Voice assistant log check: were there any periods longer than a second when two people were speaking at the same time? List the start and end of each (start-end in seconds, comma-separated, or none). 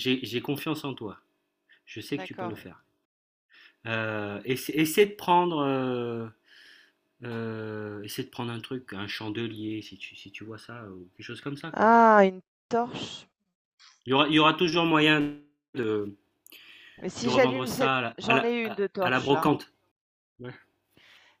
17.2-19.6